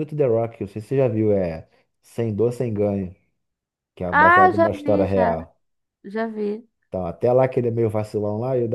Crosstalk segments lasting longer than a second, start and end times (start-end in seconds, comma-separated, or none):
4.1-5.3